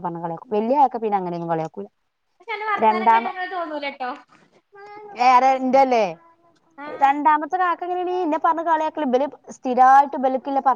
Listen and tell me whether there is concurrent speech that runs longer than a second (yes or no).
no